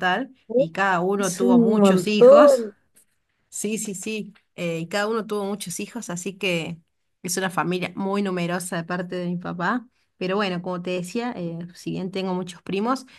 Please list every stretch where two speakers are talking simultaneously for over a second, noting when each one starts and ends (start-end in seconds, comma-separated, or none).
1.2-2.6